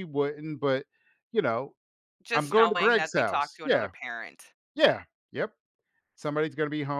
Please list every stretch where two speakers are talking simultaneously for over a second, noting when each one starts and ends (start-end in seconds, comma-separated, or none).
2.3-3.9